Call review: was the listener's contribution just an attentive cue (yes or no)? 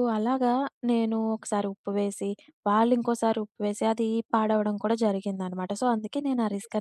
no